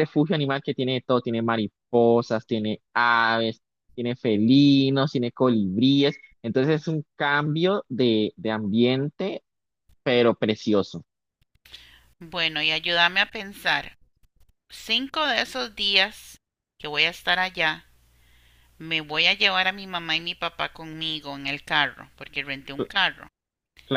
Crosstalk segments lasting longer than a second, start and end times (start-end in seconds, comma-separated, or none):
none